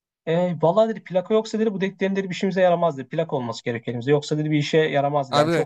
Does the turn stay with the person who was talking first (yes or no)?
no